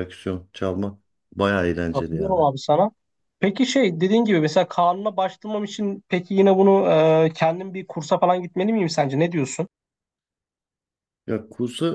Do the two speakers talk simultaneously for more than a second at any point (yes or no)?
no